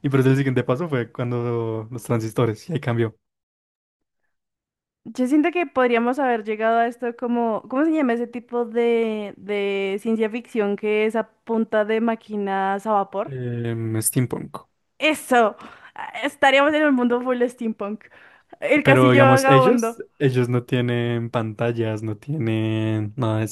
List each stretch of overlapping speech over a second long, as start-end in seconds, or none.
18.8-20.1